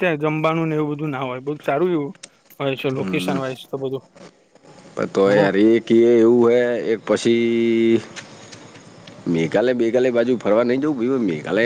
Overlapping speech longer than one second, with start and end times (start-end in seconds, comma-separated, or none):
none